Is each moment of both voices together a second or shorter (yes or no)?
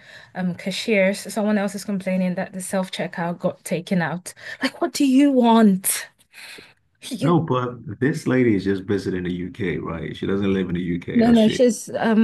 yes